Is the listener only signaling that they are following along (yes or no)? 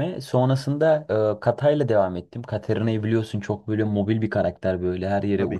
yes